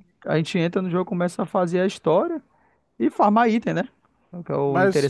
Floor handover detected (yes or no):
yes